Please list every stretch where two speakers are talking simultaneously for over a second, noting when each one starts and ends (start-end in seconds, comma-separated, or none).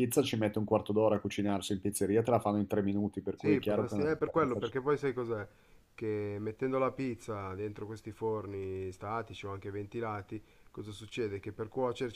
3.4-4.7